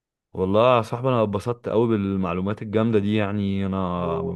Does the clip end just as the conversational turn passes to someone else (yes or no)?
no